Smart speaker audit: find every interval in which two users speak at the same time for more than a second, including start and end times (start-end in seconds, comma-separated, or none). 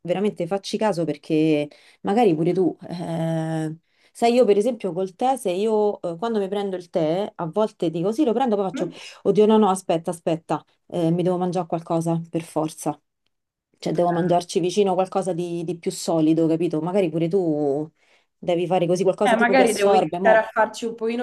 19.2-20.4